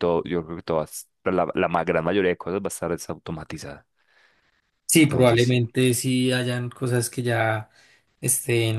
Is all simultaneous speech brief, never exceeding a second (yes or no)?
yes